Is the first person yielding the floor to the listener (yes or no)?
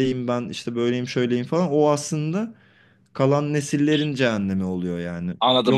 yes